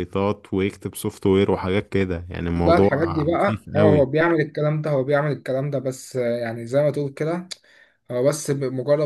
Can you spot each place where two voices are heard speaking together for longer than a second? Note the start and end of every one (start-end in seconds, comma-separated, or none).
2.5-4.1